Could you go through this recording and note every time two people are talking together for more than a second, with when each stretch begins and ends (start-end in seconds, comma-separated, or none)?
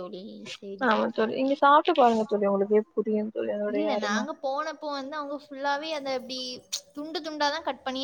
none